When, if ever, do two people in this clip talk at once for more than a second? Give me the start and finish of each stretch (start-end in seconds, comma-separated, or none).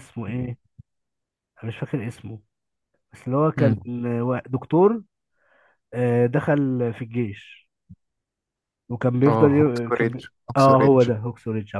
9.3-11.1